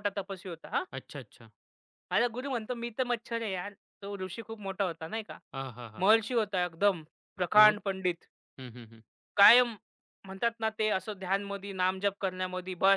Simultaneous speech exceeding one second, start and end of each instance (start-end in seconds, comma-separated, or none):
none